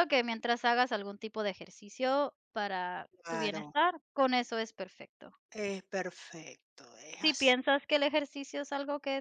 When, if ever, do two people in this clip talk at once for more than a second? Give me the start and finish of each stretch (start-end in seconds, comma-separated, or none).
none